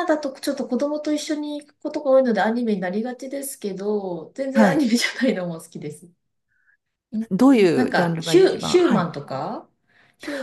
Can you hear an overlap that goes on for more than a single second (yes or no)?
yes